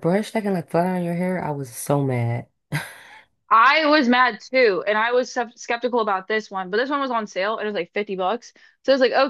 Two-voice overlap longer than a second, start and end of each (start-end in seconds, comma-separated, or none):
none